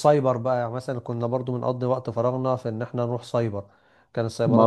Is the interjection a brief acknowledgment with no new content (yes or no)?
no